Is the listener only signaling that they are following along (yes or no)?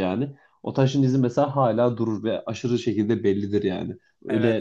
no